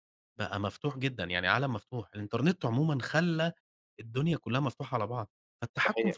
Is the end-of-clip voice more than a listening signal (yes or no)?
no